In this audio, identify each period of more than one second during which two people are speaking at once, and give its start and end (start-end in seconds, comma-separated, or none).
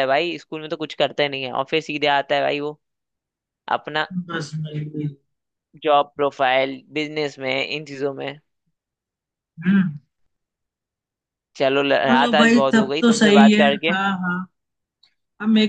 12.1-14.0